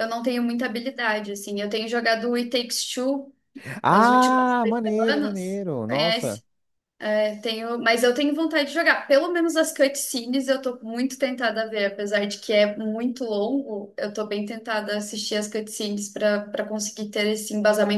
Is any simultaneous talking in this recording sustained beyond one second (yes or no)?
yes